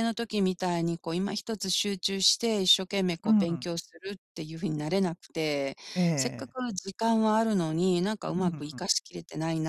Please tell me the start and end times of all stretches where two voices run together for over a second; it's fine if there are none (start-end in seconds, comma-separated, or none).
none